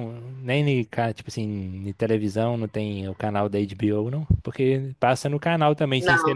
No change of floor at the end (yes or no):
yes